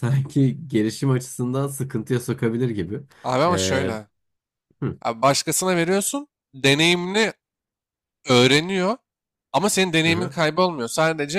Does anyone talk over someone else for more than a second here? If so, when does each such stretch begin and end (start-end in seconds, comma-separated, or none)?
none